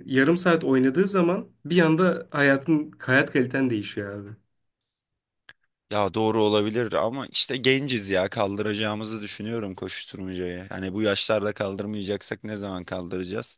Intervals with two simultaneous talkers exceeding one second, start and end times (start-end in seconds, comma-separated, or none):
none